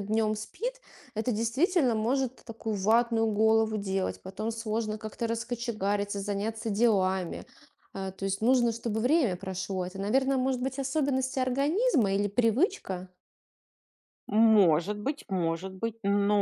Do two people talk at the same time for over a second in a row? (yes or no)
no